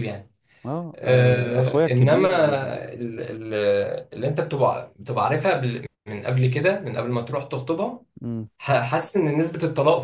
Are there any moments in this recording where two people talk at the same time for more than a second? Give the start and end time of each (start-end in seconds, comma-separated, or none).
0.9-2.3